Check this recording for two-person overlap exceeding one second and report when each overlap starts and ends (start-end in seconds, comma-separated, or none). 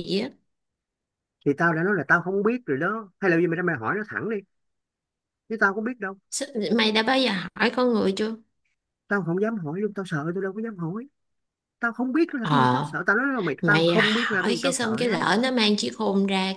13.6-15.3